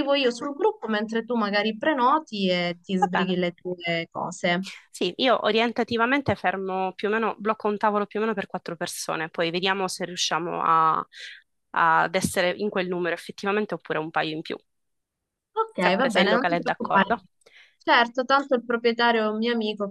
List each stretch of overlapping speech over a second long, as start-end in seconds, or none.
15.8-17.2